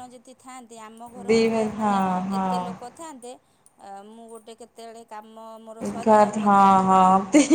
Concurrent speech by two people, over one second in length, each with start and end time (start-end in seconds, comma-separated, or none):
none